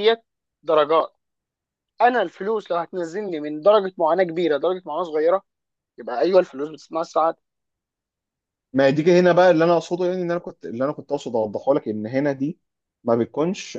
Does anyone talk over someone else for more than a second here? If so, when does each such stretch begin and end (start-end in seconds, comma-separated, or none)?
none